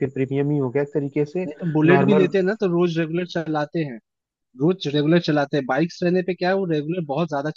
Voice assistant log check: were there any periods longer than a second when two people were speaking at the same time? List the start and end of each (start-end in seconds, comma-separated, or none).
none